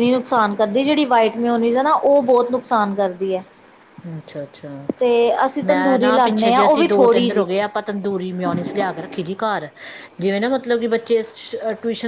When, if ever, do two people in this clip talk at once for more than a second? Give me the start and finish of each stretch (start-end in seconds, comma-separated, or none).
5.7-7.5